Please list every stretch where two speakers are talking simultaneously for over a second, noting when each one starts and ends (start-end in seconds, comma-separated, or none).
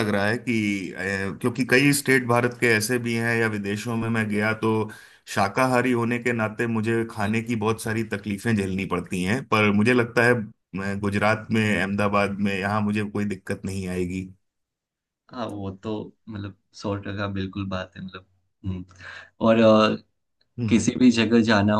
none